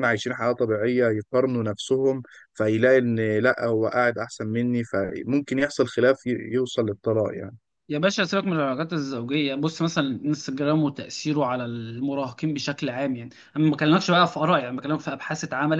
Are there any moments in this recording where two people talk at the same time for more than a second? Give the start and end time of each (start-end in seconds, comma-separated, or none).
none